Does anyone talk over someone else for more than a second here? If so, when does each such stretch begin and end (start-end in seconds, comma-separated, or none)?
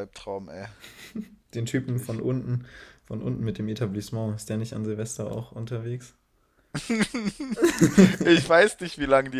none